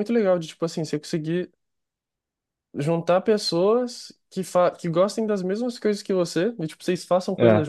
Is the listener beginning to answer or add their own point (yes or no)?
no